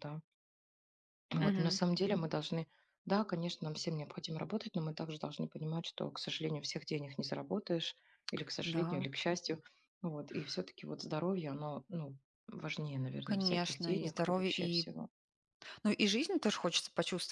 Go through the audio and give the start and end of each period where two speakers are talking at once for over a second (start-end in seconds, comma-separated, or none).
13.2-14.9